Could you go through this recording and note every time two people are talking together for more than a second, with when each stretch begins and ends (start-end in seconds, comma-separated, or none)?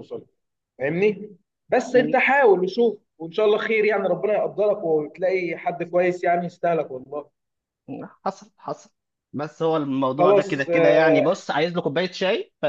10.2-11.4